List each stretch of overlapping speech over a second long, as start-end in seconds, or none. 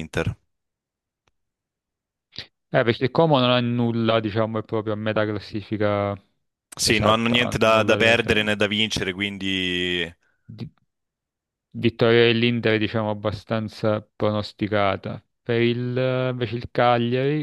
6.8-8.6